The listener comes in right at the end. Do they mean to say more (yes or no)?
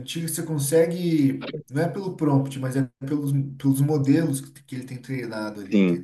yes